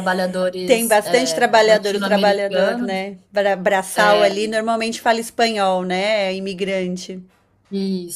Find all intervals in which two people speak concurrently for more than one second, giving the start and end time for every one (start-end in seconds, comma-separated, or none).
0.7-3.0